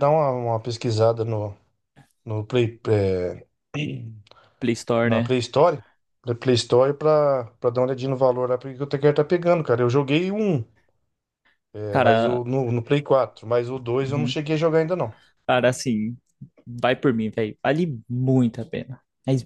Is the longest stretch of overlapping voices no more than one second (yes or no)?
yes